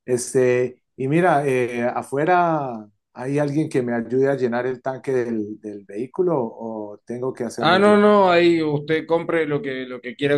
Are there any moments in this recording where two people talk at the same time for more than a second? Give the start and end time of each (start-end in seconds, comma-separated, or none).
none